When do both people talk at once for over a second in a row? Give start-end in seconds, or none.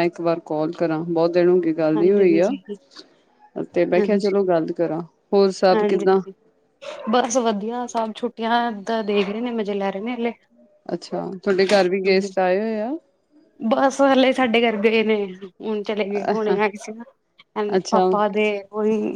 none